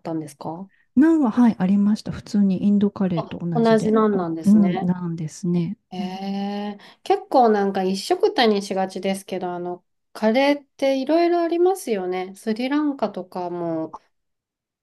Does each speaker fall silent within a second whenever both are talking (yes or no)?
no